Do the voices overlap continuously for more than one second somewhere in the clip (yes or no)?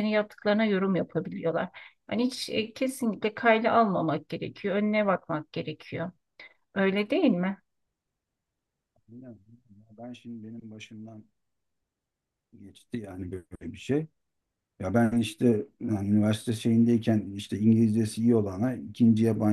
no